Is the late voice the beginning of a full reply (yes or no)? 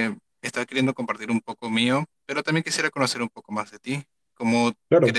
no